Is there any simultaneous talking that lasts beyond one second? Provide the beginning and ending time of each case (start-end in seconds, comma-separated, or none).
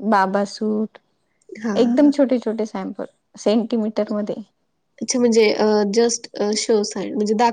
none